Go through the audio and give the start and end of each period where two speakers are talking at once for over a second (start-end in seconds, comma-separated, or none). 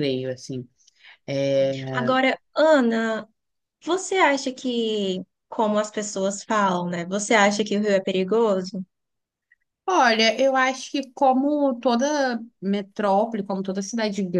none